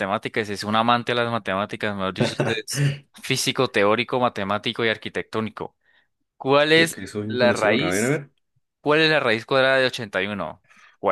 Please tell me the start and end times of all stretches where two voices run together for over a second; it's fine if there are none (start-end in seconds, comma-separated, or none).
6.7-8.2